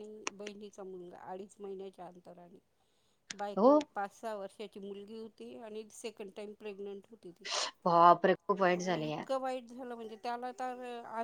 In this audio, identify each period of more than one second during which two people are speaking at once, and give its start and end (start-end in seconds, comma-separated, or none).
none